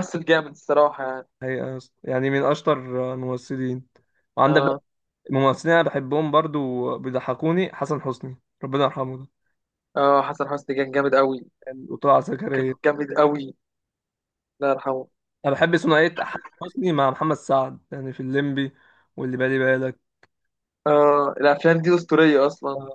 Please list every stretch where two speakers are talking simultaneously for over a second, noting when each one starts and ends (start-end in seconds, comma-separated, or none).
none